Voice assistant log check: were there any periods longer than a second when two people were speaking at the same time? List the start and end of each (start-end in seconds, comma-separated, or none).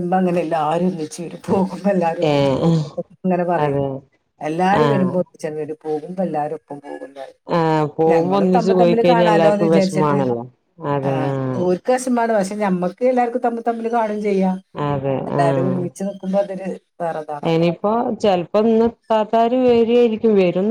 8.1-10.2